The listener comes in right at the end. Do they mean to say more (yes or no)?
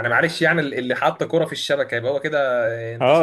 yes